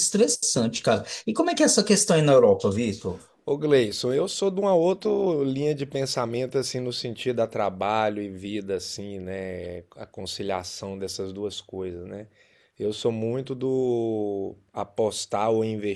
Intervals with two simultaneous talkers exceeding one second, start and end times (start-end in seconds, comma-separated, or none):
none